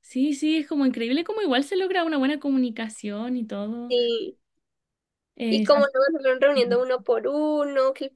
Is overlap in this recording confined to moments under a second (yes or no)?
yes